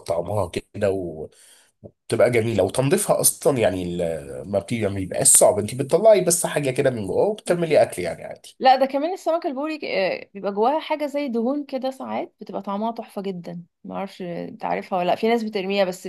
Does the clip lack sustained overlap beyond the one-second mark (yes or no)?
yes